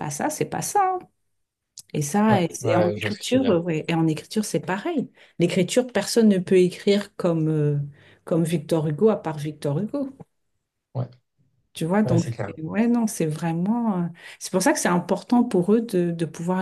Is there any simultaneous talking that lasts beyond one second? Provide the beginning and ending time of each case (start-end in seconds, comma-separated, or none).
2.3-3.6